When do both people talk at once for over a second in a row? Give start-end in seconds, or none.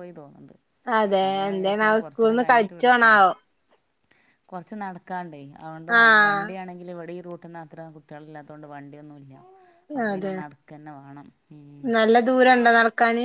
1.2-3.2